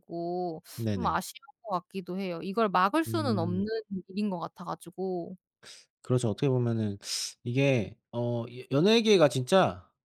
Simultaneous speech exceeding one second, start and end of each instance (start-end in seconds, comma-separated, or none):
none